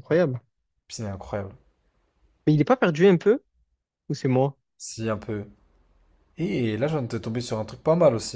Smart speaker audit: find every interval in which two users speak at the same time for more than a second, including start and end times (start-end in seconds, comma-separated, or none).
none